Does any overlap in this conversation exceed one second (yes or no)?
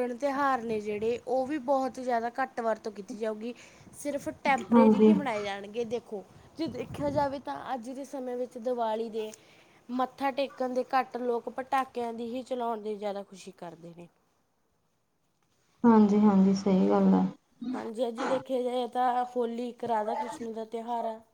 no